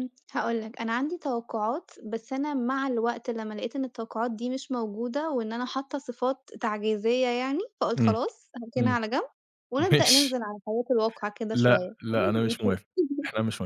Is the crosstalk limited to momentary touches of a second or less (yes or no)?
no